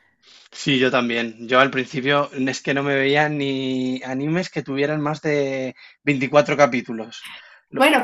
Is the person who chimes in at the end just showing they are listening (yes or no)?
no